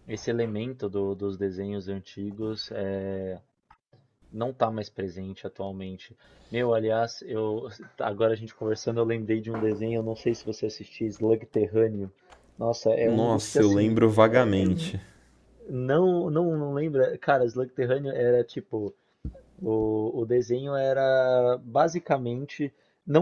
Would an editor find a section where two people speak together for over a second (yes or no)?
yes